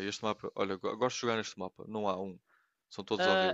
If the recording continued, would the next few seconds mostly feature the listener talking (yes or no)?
yes